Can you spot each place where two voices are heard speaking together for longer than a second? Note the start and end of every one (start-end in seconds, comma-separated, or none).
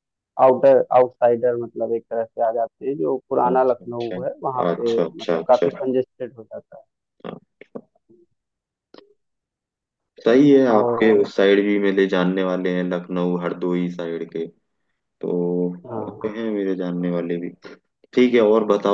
3.5-5.8